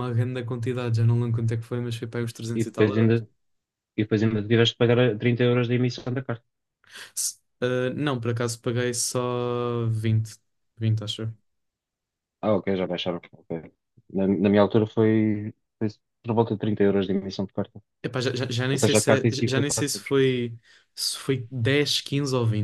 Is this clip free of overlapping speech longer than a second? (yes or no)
no